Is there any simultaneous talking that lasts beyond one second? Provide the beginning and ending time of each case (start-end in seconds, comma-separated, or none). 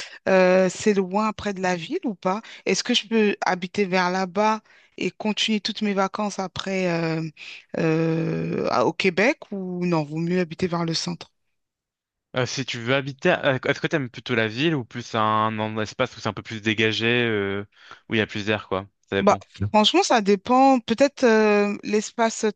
none